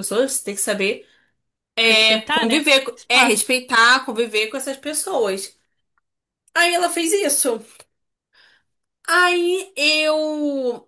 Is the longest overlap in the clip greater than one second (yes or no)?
yes